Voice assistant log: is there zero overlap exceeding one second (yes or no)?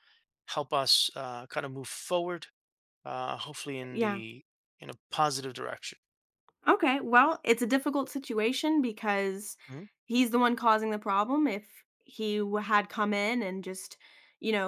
yes